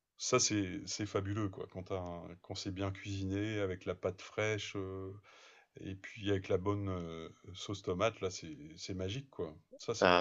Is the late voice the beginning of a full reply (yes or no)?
yes